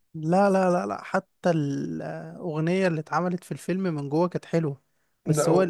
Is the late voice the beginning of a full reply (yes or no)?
no